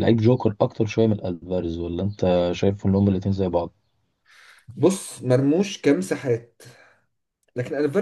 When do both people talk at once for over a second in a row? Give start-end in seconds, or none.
none